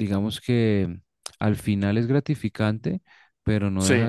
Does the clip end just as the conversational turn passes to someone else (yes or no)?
no